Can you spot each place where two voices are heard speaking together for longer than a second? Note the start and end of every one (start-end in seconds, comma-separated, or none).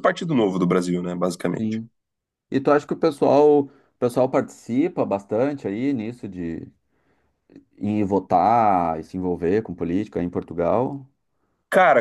none